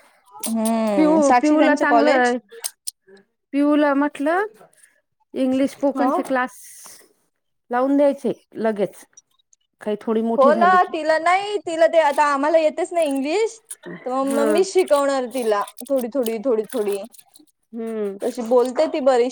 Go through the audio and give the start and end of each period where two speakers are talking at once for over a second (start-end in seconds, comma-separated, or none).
0.9-2.3